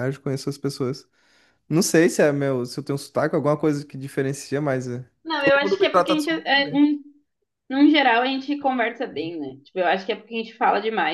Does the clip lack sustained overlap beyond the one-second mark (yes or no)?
no